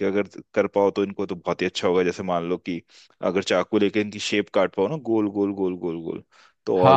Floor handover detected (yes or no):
yes